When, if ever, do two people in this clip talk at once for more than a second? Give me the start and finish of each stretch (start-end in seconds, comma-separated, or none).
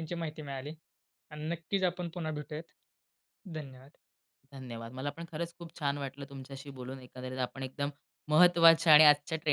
none